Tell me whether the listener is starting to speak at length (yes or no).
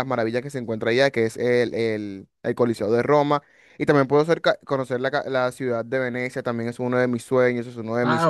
yes